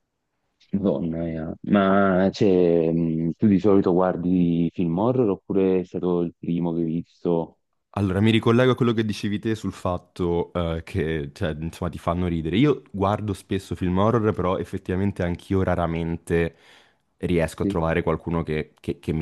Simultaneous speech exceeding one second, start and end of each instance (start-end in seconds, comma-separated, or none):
none